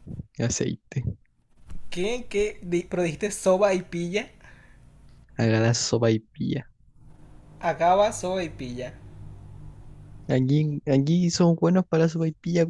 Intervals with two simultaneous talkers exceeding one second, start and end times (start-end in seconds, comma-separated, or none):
none